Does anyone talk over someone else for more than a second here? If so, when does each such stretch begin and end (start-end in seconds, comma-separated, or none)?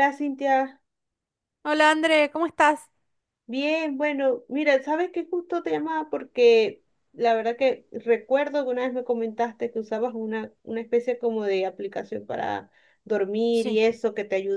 none